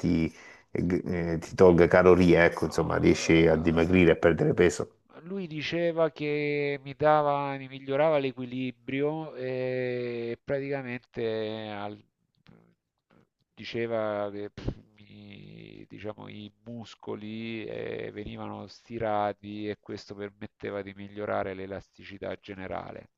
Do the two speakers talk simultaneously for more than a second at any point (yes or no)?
yes